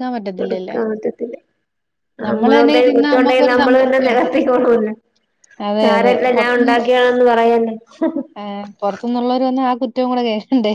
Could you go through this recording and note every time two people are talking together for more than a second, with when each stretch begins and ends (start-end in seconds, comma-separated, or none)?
2.6-4.3